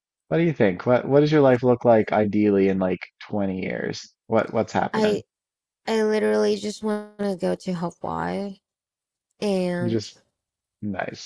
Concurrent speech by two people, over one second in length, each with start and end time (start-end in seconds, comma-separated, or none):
none